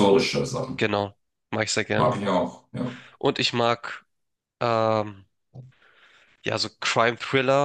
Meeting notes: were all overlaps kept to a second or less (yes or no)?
yes